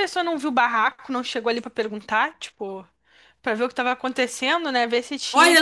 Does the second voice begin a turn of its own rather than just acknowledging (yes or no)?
yes